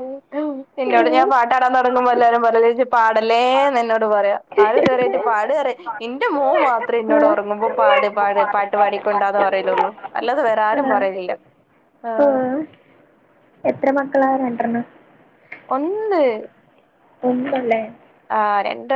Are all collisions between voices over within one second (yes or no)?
yes